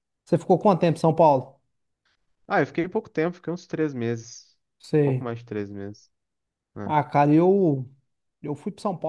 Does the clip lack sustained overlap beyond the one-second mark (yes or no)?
yes